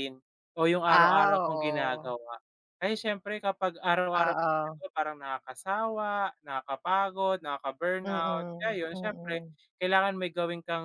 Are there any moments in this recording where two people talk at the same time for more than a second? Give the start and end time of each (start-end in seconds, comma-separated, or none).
0.9-2.1, 8.0-9.4